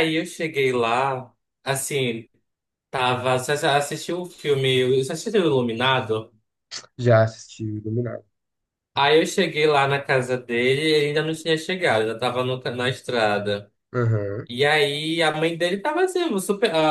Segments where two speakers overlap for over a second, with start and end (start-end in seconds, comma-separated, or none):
none